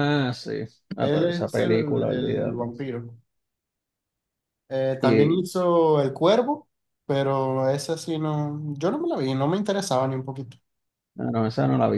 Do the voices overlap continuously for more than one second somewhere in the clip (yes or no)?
yes